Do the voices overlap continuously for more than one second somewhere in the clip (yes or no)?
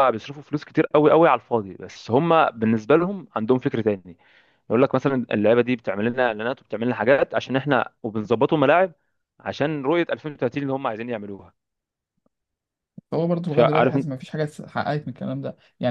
no